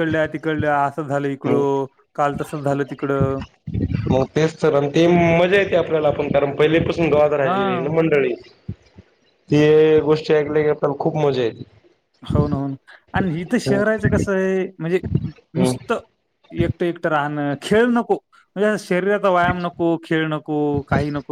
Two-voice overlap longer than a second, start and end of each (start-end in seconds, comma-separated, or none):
none